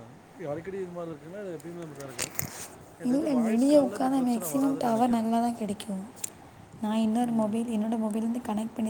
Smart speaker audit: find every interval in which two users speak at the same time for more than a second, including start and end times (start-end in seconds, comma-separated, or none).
3.1-5.2